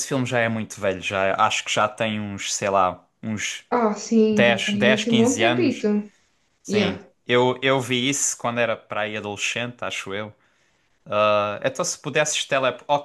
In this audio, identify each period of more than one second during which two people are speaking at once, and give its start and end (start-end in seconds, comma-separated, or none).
4.3-5.8